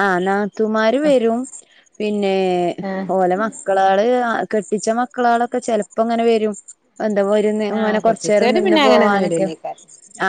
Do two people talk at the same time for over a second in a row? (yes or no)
yes